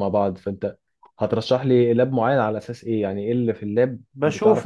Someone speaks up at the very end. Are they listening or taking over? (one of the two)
taking over